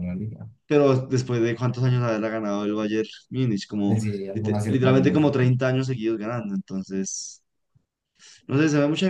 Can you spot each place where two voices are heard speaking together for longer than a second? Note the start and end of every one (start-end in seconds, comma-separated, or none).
3.9-5.2